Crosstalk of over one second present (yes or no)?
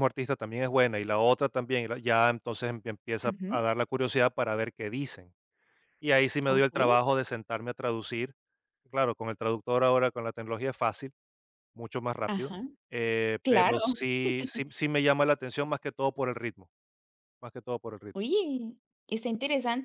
no